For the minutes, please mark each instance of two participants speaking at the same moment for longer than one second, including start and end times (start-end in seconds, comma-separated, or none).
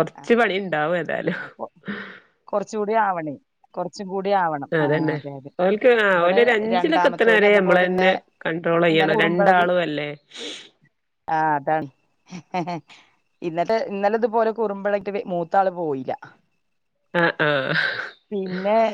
6.2-8.1